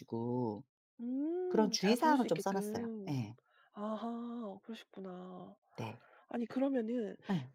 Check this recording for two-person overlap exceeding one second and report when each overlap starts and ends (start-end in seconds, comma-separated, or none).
1.5-3.2